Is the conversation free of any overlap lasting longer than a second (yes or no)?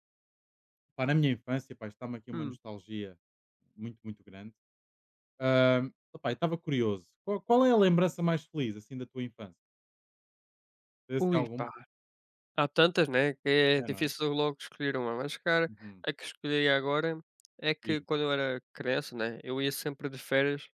yes